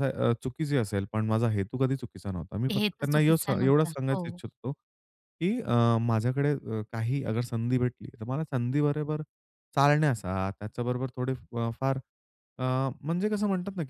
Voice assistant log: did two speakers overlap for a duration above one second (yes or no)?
yes